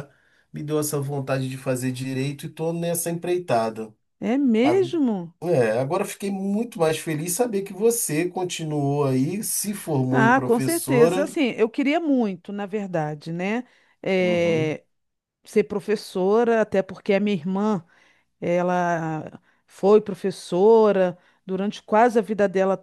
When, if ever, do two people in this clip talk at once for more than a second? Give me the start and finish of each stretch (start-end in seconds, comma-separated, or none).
10.1-11.3